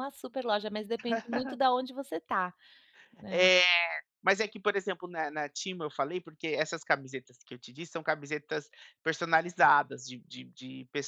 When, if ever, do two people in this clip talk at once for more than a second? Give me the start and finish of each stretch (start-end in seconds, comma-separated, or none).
none